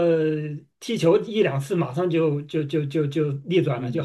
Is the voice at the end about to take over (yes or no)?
yes